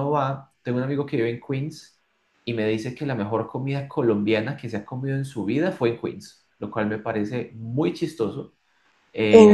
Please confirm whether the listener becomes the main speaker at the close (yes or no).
no